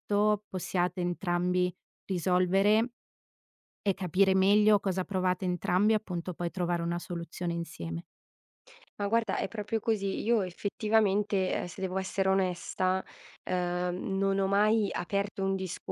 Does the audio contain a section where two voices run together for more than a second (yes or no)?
no